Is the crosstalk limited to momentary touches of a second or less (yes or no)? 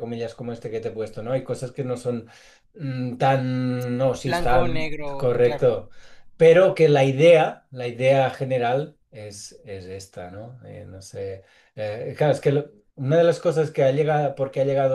no